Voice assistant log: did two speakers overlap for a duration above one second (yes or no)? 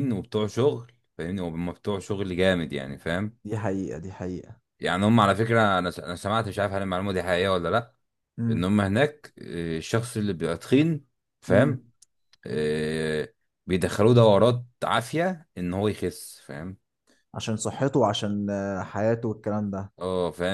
no